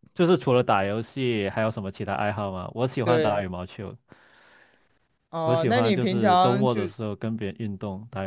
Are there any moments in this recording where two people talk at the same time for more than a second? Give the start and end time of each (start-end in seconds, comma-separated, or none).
5.4-6.8